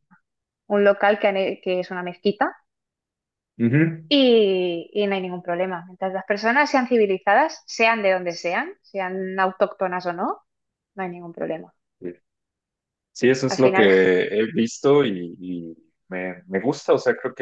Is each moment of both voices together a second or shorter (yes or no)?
yes